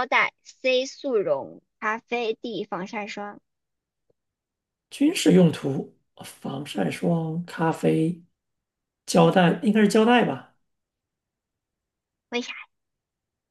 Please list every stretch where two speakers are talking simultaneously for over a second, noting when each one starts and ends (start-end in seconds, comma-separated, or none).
none